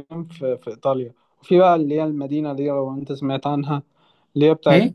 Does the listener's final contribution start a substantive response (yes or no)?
no